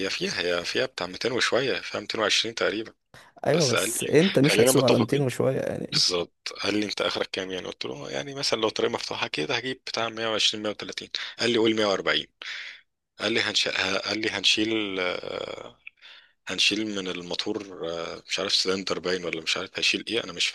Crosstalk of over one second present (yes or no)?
yes